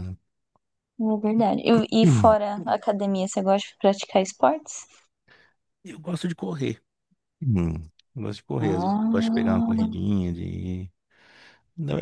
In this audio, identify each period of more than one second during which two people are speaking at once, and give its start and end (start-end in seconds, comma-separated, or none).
8.6-9.9